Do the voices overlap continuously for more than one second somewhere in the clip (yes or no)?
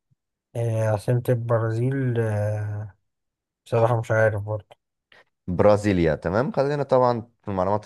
no